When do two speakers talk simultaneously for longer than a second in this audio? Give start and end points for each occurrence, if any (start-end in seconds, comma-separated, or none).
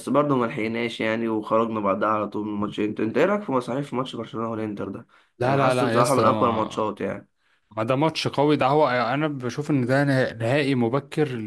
5.4-6.9